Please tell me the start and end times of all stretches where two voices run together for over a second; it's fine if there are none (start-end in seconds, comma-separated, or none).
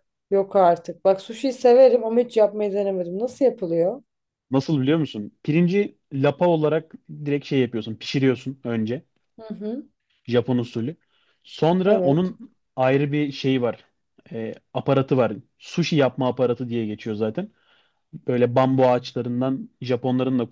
none